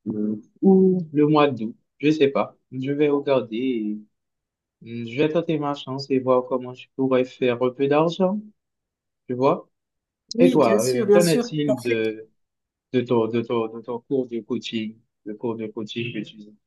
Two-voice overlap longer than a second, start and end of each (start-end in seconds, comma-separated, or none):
10.4-12.2